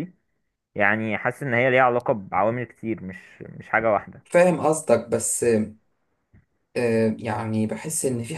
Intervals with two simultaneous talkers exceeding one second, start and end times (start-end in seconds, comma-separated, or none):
none